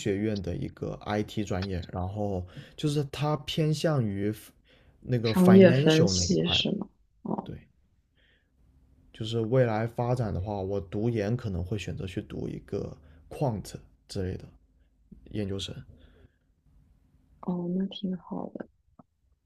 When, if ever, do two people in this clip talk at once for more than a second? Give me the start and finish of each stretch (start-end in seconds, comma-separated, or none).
5.2-6.7